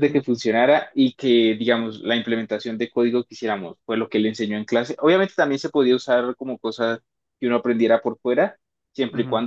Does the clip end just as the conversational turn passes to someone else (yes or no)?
no